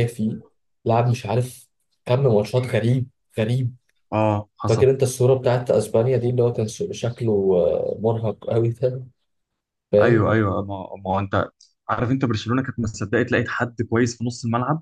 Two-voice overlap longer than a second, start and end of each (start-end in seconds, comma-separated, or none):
none